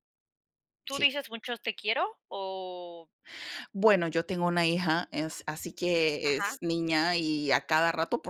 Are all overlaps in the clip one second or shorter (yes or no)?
yes